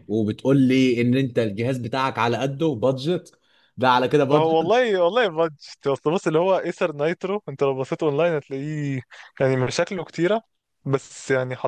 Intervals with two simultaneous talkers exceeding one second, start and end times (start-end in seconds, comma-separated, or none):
none